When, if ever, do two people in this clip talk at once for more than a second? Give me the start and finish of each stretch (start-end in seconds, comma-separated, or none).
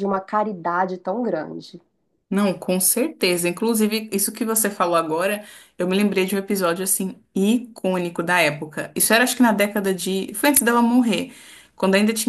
none